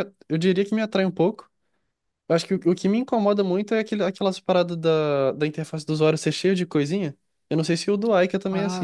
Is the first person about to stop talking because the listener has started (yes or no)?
yes